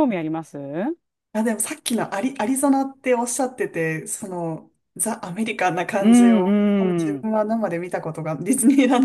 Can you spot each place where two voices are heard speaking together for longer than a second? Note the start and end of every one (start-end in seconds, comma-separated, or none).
none